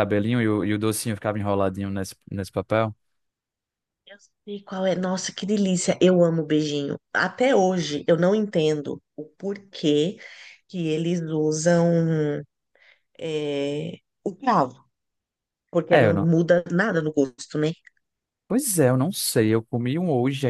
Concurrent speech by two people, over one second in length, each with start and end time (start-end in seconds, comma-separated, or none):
none